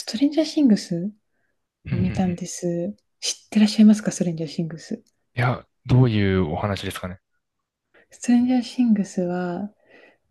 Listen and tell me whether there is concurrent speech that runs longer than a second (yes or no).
no